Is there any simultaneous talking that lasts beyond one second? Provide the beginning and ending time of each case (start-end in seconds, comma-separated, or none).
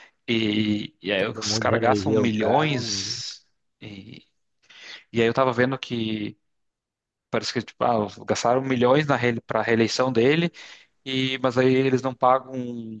1.2-2.7